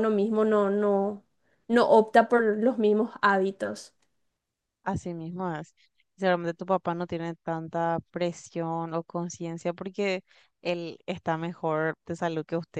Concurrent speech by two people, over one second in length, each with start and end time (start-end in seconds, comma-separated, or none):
none